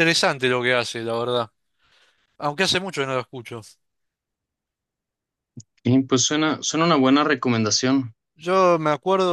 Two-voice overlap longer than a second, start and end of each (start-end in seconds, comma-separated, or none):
none